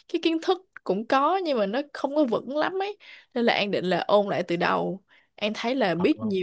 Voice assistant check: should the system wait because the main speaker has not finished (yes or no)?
yes